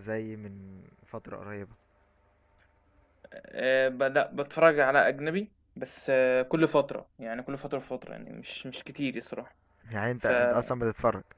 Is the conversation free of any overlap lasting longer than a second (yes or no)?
yes